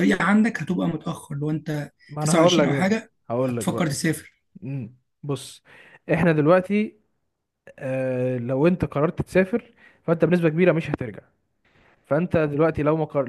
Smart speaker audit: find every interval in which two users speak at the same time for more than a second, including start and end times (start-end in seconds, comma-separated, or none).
2.1-3.9